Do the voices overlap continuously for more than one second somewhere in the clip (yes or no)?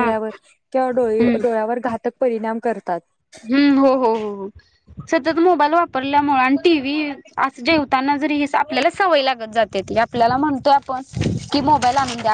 no